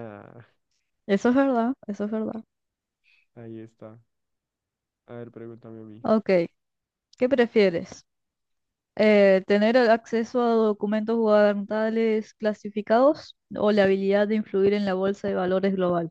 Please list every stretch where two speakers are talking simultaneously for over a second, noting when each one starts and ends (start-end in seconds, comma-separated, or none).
none